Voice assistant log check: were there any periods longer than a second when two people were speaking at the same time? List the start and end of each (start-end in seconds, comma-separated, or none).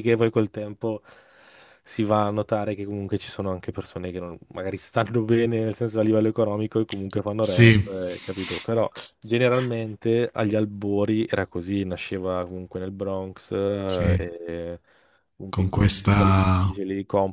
15.5-16.8